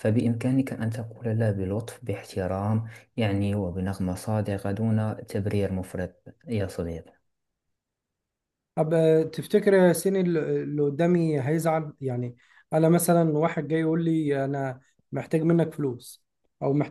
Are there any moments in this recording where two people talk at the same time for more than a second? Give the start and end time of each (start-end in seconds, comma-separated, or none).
none